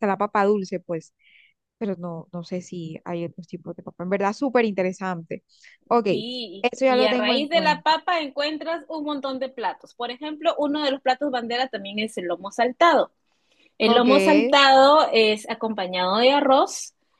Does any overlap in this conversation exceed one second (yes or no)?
yes